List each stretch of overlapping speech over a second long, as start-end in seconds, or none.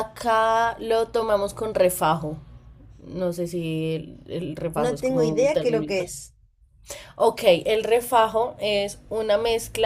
4.7-6.0